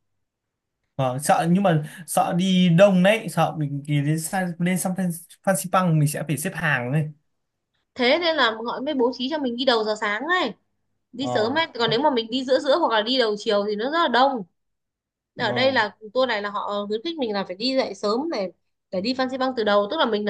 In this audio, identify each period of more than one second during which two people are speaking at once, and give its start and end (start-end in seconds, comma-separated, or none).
none